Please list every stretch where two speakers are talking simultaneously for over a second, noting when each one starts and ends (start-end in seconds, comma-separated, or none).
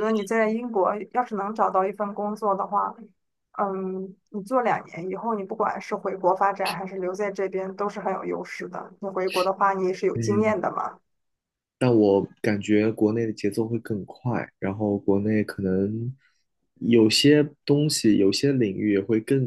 none